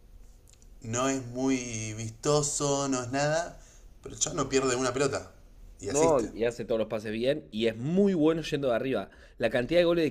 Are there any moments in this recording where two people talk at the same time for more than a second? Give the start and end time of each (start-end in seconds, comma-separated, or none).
none